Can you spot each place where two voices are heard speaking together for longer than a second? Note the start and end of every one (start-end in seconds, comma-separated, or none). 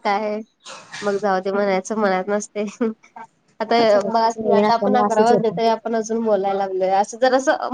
4.1-5.5